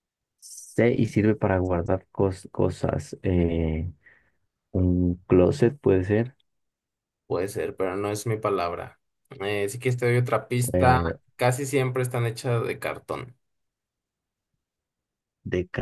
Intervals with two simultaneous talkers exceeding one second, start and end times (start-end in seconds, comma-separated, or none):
none